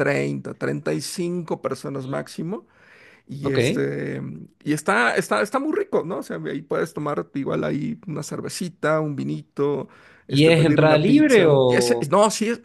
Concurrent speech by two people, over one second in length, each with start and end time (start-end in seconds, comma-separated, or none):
10.3-12.1